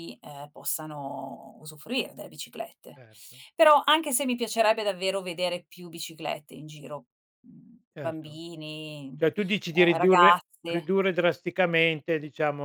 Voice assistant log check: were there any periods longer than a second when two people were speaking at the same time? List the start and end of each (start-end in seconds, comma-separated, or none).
9.2-10.9